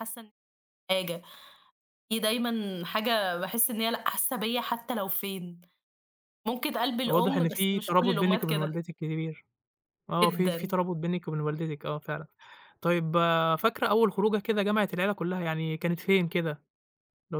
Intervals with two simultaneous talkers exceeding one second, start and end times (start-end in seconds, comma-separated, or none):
7.1-8.8